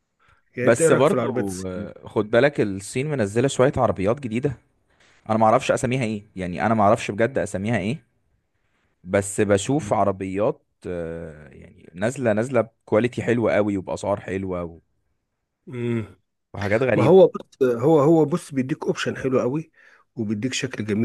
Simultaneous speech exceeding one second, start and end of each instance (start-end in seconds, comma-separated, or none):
0.6-2.0